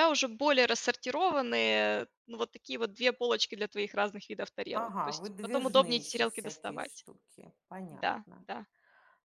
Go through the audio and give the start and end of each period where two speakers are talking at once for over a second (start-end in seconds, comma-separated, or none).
4.7-7.0